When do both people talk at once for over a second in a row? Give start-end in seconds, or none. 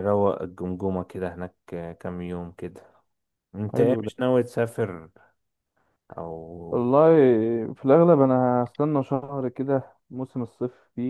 none